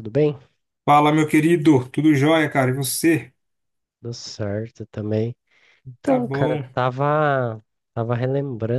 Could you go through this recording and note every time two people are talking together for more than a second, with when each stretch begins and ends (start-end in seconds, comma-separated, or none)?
none